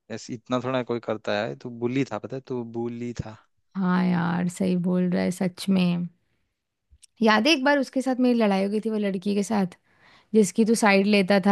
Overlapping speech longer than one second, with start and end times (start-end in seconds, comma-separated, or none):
none